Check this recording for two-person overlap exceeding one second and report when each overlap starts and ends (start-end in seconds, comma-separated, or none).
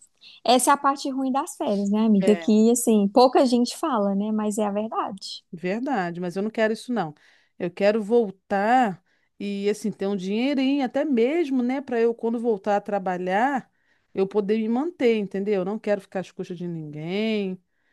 none